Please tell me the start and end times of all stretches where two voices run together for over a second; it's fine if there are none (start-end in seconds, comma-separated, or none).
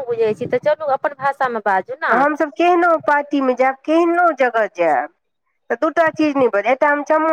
none